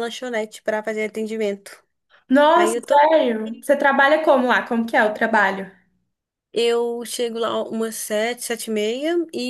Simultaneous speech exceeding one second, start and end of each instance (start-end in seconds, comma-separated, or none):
none